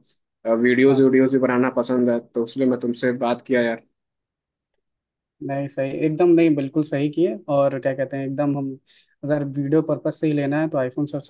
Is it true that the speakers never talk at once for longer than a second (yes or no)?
yes